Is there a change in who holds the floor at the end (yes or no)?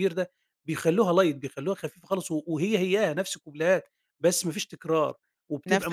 yes